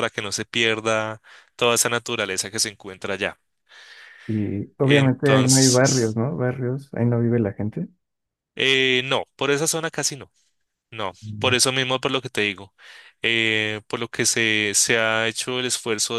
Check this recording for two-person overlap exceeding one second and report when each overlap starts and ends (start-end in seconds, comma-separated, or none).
4.8-6.2